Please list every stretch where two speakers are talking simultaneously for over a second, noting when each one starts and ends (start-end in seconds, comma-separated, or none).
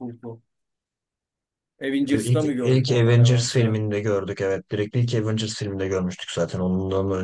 2.0-3.8